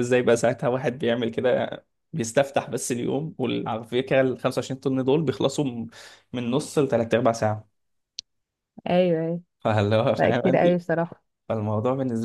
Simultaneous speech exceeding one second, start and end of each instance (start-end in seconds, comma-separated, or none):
none